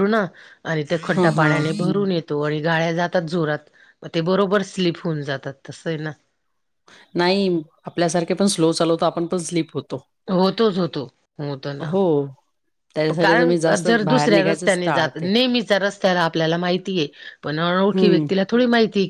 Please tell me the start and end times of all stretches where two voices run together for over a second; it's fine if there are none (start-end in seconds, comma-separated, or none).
13.2-15.3